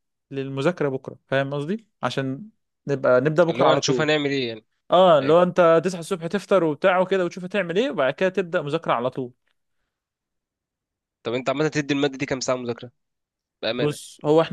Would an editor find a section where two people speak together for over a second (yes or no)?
no